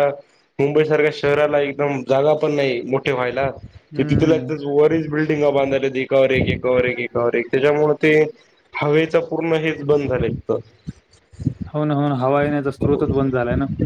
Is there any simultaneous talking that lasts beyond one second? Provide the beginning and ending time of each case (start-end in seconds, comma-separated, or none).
none